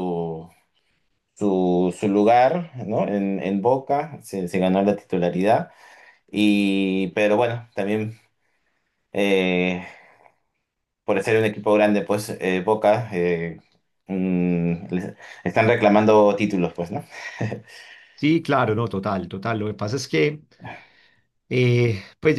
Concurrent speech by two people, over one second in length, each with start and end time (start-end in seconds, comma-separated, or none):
none